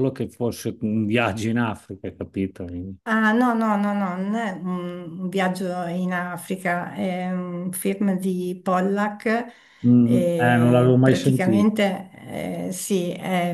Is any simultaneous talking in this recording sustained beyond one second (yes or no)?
yes